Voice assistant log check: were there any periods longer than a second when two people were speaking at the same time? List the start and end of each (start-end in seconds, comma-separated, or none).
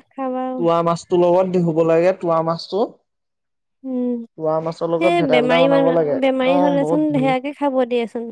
5.0-7.0